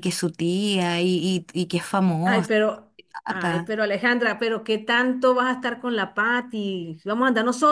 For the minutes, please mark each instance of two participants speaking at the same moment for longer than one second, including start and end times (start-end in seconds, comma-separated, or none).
none